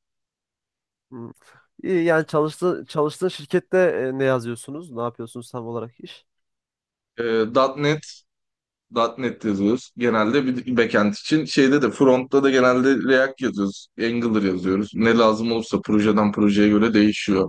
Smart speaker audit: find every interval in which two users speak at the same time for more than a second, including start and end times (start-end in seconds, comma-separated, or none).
none